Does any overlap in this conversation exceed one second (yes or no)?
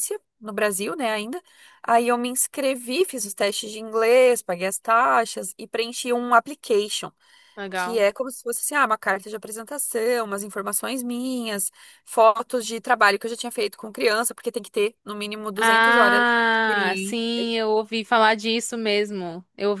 yes